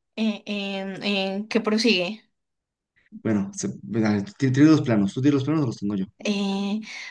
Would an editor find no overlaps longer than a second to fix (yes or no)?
yes